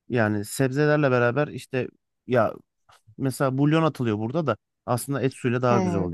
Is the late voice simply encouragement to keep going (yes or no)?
no